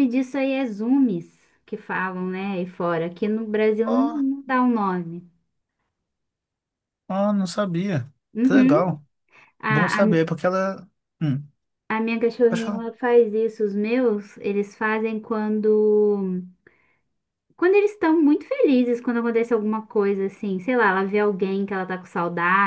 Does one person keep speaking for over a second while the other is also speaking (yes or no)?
no